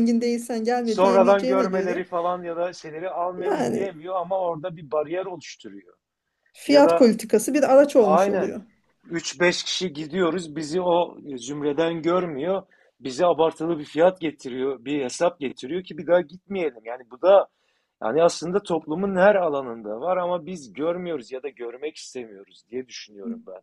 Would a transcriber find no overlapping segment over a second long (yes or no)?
no